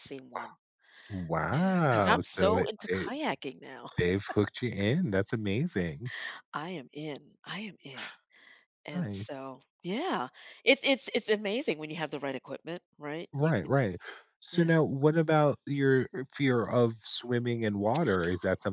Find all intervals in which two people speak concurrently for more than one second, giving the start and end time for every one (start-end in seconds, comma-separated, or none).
1.5-3.1